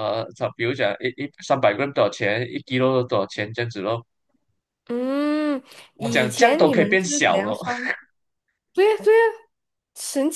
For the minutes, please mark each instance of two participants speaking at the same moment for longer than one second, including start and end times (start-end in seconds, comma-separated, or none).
6.0-7.6